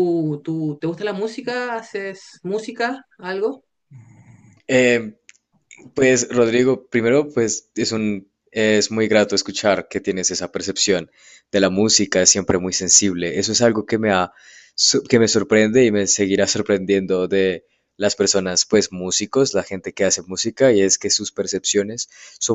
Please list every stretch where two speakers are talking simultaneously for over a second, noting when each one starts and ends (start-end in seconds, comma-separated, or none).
none